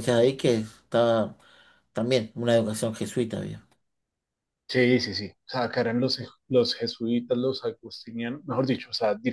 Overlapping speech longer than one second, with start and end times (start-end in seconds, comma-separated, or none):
none